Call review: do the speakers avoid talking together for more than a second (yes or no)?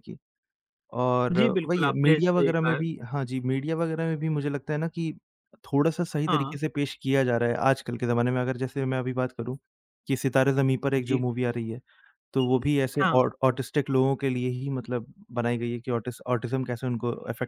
no